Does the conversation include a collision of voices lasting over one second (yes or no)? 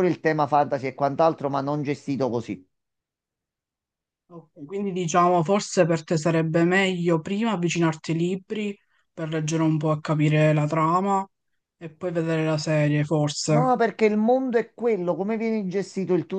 no